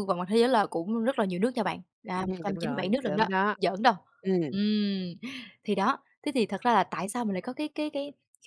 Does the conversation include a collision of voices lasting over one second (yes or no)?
yes